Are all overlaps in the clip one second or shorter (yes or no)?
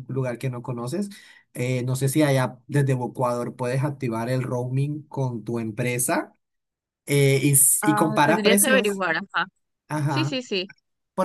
no